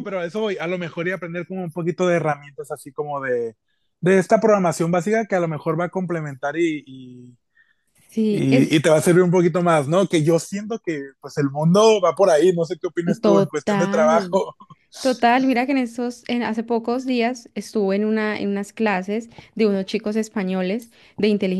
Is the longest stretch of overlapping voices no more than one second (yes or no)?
no